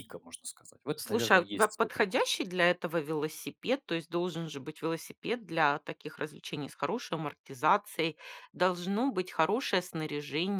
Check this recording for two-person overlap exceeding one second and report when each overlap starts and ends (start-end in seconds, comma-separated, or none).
0.9-2.3